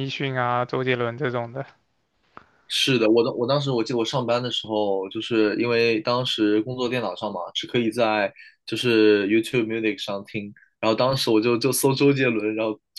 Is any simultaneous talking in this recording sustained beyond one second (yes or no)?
no